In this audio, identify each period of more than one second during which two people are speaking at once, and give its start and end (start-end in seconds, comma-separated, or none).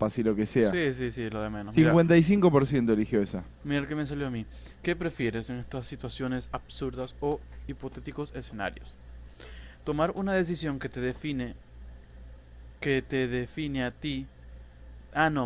none